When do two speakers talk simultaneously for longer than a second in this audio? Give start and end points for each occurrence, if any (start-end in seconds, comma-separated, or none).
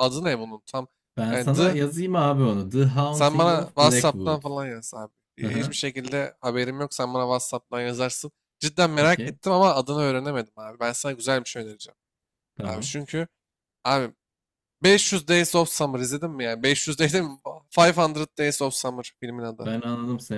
3.1-4.4